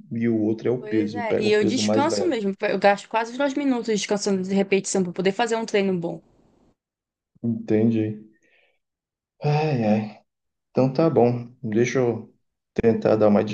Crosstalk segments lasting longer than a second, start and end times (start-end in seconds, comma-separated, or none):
0.8-2.4